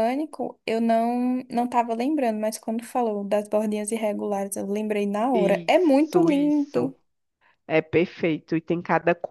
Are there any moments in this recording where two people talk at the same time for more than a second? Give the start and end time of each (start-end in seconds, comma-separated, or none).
5.3-6.9